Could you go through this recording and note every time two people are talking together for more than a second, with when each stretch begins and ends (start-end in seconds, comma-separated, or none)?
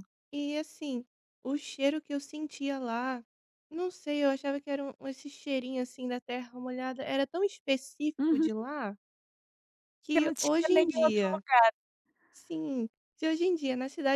10.1-11.4